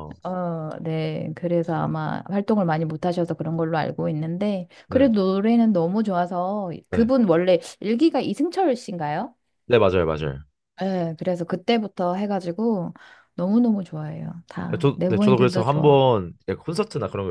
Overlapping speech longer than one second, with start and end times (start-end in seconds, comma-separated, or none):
14.7-16.1